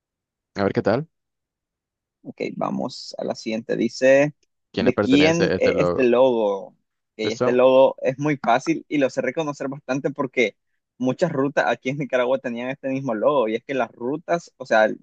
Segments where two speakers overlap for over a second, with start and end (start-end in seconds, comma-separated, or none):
4.8-6.1